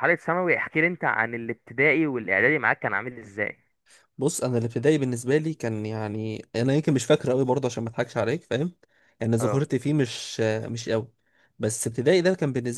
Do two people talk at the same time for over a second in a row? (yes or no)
no